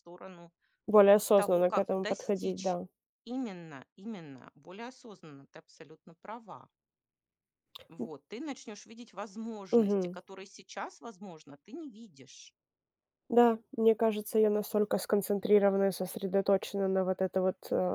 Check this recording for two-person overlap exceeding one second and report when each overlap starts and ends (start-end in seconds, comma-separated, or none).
1.4-2.8